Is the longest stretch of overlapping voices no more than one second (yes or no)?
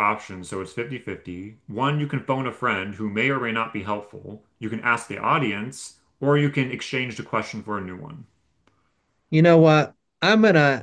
yes